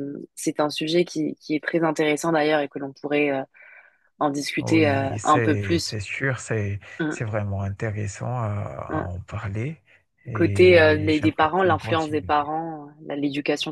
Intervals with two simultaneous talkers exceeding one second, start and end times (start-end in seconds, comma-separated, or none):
4.6-6.0, 10.3-12.5